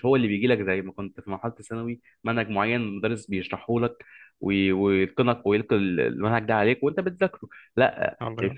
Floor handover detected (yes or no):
no